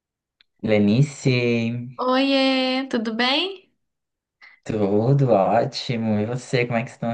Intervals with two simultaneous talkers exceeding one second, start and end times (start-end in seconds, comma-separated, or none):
none